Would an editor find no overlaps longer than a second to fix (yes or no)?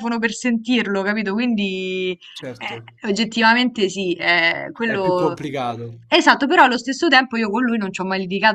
yes